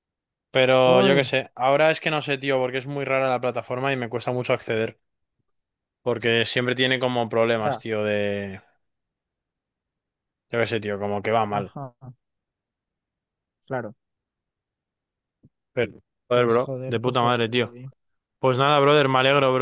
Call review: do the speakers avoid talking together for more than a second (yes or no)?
no